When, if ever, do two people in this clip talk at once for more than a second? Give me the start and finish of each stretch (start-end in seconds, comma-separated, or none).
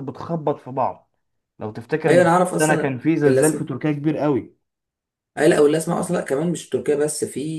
2.1-3.7